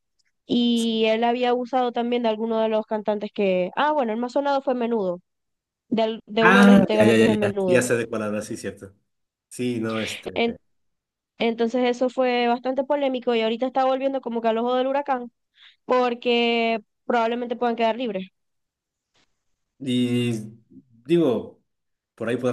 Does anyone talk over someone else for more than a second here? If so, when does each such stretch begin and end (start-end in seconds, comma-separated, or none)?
6.4-7.8